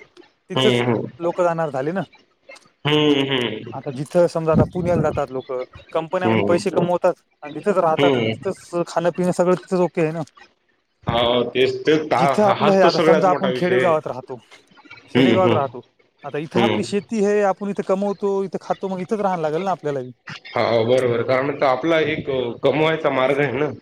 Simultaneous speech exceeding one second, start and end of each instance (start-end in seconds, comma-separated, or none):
12.2-13.9